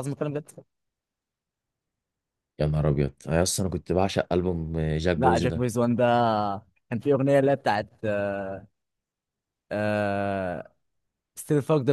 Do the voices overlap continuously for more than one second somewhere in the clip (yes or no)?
no